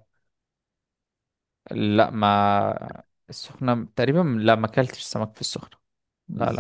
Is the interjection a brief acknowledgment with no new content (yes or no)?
no